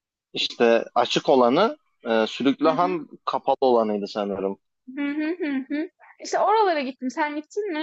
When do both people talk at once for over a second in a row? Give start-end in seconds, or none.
none